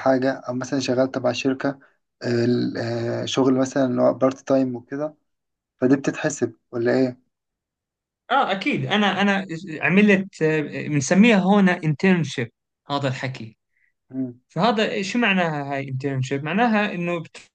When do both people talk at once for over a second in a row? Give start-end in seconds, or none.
none